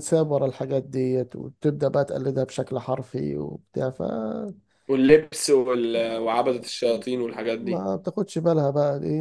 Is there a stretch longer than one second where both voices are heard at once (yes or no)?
no